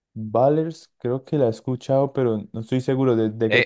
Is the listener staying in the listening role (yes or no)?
no